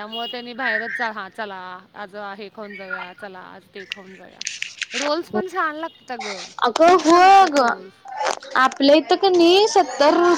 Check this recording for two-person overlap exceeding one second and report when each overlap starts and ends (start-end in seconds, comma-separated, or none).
none